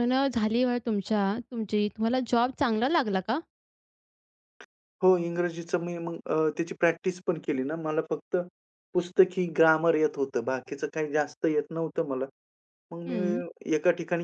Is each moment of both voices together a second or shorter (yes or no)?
yes